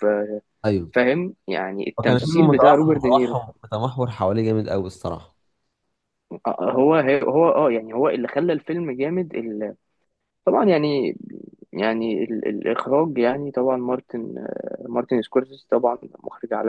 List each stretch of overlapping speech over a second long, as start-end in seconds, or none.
2.0-3.4